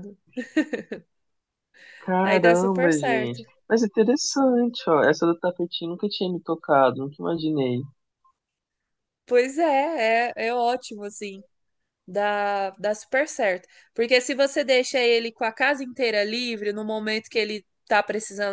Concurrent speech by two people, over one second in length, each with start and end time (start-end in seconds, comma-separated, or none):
2.2-3.4